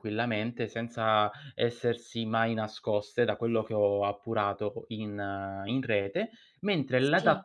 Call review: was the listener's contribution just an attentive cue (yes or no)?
yes